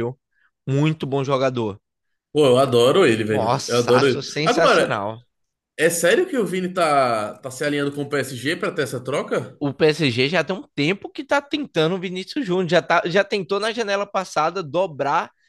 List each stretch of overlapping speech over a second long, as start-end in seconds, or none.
3.3-5.0